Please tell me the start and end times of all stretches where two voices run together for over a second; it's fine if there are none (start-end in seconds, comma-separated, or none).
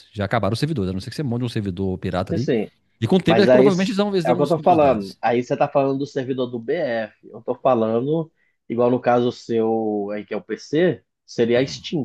3.2-5.2